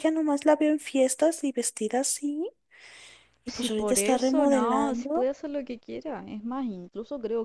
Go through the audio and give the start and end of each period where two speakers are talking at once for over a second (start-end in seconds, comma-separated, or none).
3.5-5.3